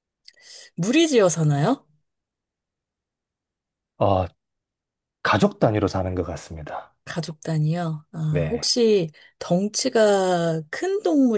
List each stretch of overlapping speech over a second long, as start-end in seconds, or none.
none